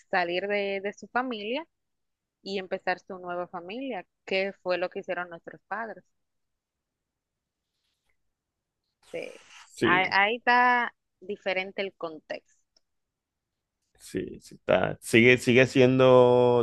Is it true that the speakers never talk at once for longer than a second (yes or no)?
yes